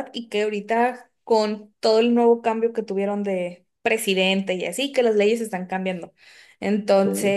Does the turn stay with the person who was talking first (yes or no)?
yes